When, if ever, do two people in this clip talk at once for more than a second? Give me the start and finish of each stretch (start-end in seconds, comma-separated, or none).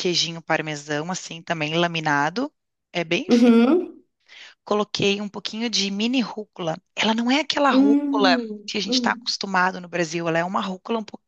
7.7-9.3